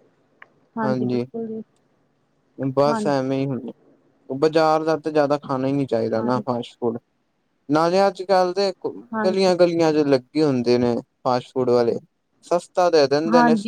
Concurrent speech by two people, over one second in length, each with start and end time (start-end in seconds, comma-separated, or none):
none